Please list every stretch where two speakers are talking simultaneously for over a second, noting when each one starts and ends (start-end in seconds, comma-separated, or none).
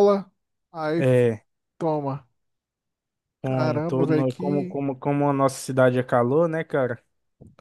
3.4-4.8